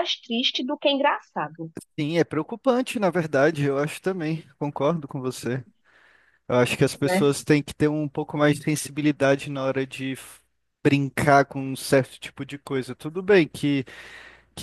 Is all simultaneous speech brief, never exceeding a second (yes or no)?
yes